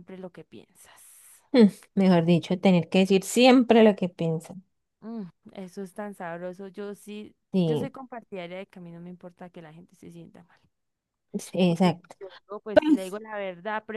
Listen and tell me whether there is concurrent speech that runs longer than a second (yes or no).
no